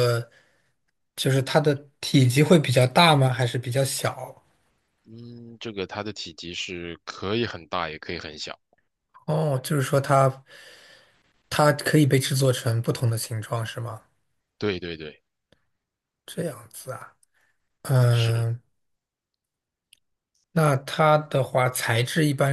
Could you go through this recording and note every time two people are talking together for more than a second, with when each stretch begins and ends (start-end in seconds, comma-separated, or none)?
none